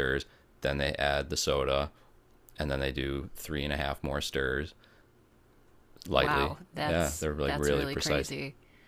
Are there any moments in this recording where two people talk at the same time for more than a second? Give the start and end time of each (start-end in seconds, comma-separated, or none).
6.1-8.3